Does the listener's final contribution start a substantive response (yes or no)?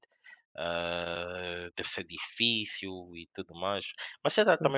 no